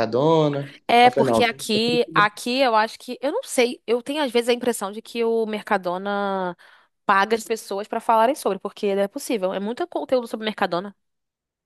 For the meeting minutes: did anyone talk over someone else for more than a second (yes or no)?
yes